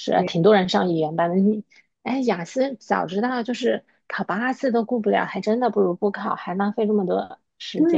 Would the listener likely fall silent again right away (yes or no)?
no